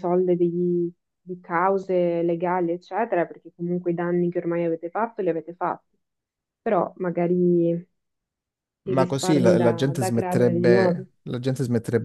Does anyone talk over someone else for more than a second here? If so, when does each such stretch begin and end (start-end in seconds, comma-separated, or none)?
8.9-11.1